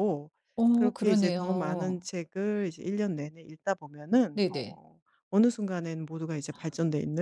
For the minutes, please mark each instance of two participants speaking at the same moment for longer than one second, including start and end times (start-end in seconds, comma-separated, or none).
0.7-2.1